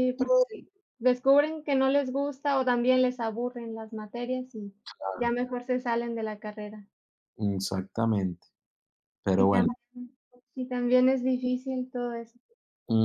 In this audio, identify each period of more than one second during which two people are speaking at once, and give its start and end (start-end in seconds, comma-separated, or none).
none